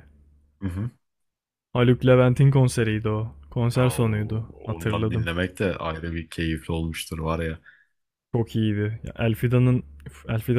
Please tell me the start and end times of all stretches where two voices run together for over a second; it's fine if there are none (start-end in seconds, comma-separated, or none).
3.8-5.3